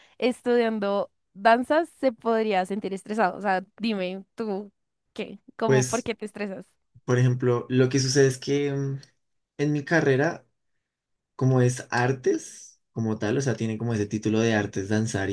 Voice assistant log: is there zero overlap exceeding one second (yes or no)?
yes